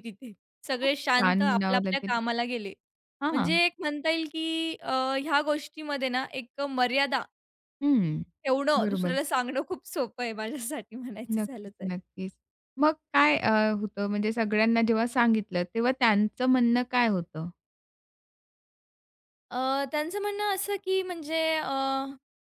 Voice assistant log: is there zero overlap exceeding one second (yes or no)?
no